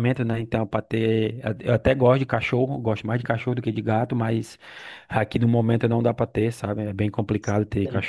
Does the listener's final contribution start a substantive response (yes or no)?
no